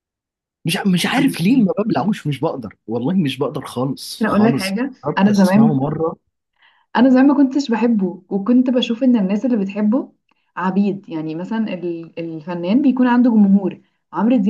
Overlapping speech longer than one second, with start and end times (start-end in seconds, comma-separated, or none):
4.2-5.8